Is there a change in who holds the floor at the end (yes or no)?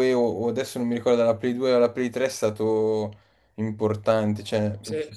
no